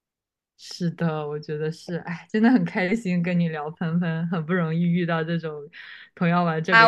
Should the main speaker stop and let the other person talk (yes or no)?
yes